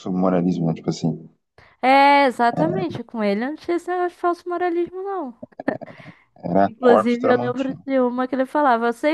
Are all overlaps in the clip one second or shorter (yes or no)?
no